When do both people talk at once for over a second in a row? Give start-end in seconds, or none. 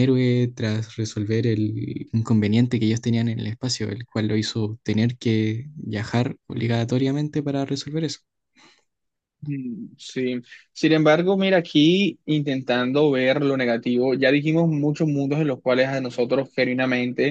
none